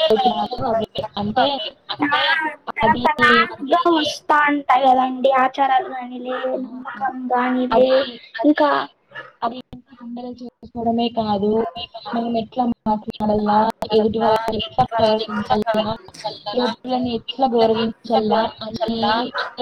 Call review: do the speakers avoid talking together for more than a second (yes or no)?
yes